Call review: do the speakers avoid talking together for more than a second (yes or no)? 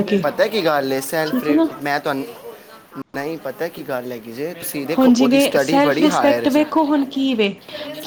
no